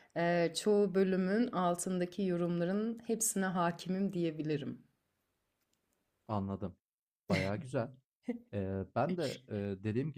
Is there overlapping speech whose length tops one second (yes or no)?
no